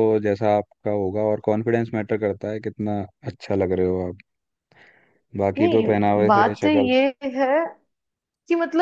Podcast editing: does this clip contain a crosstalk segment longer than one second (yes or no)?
yes